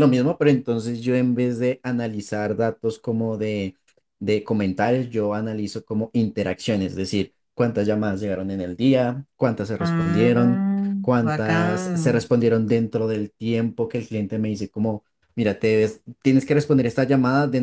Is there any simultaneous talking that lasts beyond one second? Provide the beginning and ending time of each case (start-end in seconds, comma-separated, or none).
9.8-12.3